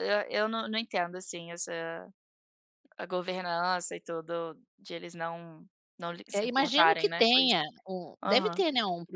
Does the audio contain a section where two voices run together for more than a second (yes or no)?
yes